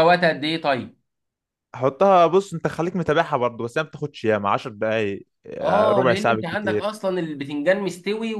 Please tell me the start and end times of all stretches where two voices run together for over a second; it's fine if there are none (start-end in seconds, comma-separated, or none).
5.6-6.9